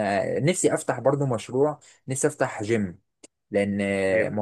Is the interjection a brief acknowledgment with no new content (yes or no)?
yes